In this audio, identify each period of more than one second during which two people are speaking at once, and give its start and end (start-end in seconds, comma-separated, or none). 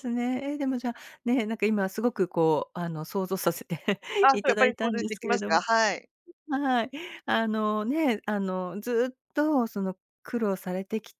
4.3-5.6